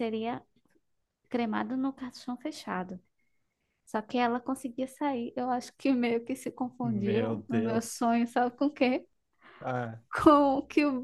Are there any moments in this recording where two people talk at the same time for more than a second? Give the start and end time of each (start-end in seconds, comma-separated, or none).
6.8-8.1